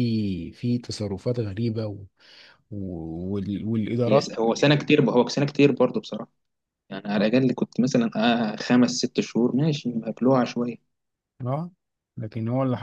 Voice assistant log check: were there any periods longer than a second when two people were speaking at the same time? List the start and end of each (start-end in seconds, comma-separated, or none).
none